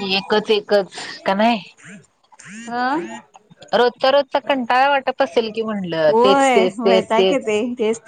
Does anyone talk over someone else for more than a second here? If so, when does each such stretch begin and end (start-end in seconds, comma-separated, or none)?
6.1-7.5